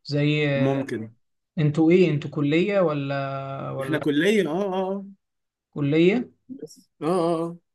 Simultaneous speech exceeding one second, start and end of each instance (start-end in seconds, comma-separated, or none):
none